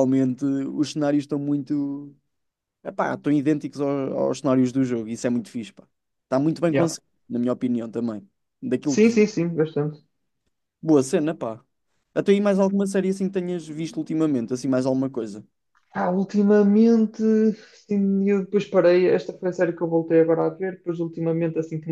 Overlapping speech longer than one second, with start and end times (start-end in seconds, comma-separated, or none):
none